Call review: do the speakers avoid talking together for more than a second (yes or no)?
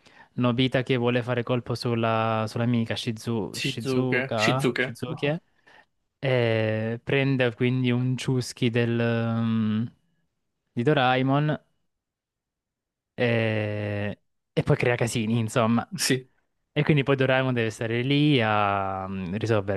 no